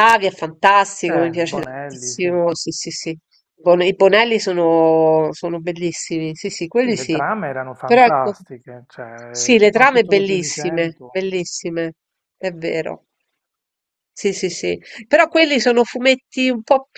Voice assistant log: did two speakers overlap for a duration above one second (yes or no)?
yes